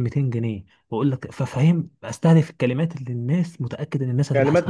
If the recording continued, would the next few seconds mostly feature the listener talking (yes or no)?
yes